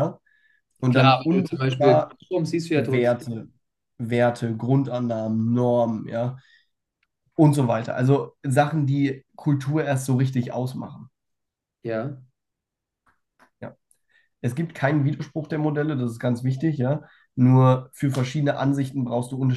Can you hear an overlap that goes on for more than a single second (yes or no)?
yes